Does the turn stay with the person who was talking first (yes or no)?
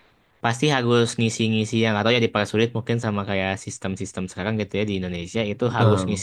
yes